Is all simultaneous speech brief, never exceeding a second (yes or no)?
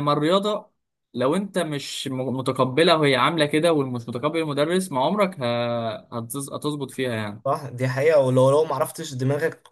yes